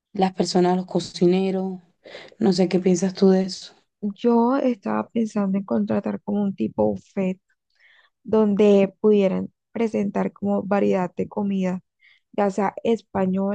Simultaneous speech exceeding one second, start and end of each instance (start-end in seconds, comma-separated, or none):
none